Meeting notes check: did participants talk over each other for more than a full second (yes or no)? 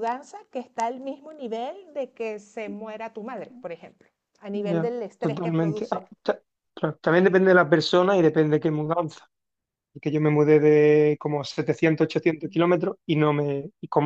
yes